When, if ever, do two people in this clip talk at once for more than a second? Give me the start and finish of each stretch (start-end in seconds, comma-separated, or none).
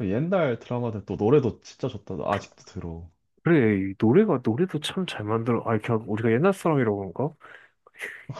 none